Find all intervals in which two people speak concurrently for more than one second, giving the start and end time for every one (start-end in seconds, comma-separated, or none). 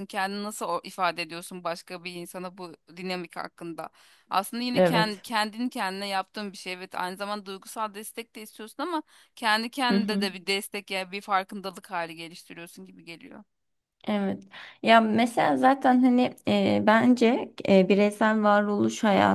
none